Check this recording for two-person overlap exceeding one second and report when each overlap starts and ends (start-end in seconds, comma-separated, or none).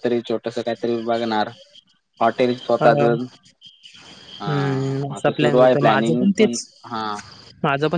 4.5-6.2